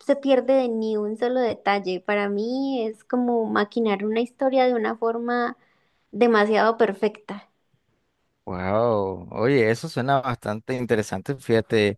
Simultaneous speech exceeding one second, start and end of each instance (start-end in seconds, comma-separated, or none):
none